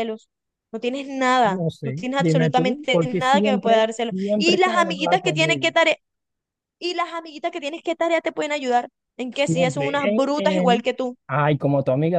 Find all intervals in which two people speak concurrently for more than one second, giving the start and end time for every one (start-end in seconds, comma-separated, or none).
1.4-5.7, 9.4-10.9